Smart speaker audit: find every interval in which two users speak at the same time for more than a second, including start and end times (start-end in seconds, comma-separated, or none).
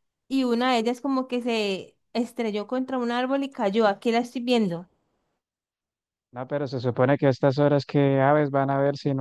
none